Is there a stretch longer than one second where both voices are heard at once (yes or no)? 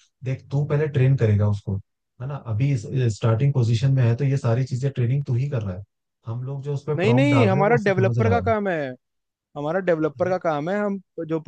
yes